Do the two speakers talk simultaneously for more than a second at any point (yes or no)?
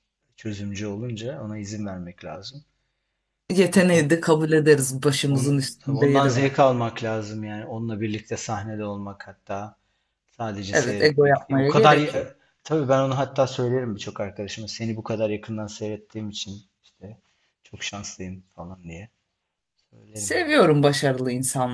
yes